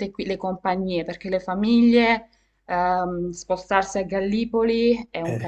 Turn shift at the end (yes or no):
no